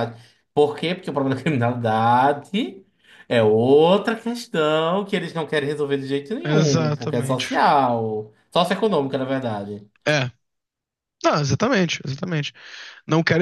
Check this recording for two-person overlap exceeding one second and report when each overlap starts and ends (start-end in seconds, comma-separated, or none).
6.5-7.7